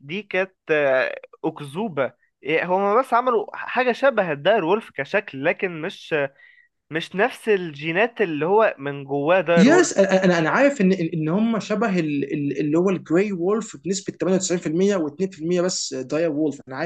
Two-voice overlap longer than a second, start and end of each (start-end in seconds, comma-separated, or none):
none